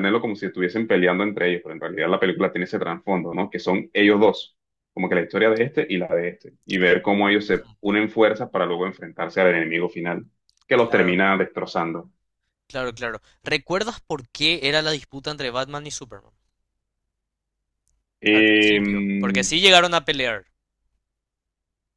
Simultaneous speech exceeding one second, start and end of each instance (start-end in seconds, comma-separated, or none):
18.3-19.5